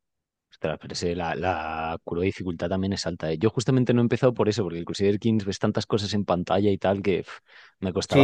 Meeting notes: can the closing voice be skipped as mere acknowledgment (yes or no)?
no